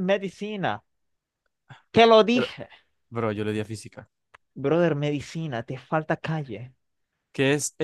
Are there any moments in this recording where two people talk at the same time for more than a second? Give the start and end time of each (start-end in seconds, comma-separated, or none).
none